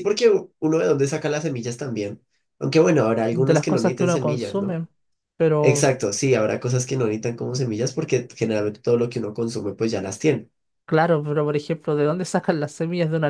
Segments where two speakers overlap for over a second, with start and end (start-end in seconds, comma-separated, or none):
3.3-4.8